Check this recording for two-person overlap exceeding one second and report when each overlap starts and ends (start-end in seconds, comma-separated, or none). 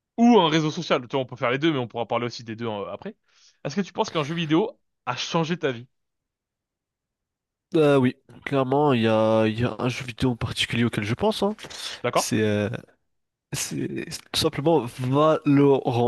none